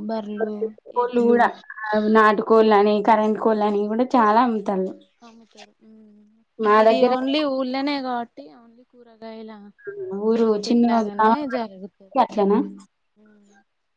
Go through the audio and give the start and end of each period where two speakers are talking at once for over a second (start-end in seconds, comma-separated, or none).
10.4-12.5